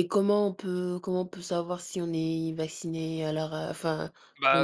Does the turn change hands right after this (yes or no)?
yes